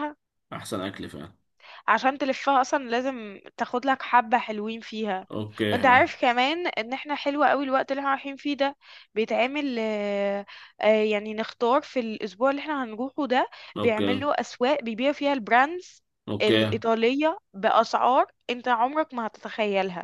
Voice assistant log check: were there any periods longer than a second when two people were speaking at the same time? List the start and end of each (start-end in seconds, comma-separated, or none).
none